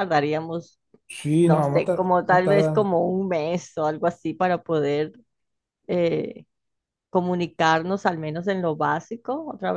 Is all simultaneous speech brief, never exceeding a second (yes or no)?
no